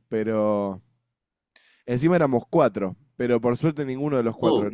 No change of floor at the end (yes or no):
yes